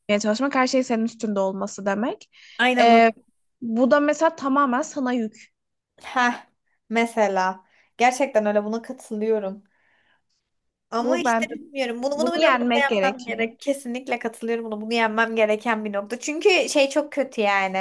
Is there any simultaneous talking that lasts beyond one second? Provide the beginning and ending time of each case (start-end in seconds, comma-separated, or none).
12.1-13.5